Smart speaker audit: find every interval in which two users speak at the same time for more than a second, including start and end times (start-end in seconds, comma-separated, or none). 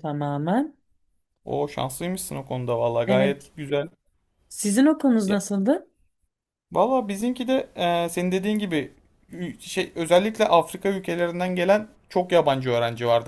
none